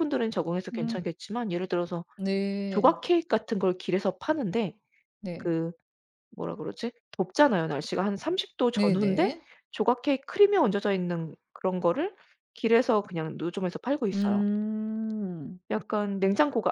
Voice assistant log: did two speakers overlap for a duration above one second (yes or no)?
no